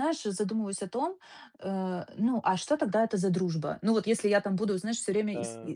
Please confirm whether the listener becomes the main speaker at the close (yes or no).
no